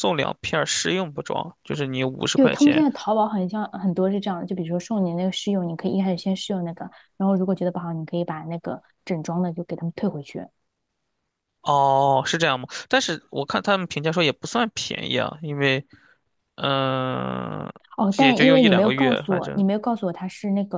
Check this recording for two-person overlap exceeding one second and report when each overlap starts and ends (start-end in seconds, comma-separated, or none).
18.2-19.6